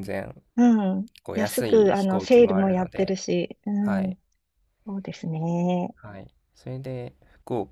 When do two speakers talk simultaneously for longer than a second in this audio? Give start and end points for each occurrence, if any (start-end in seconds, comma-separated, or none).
1.2-3.2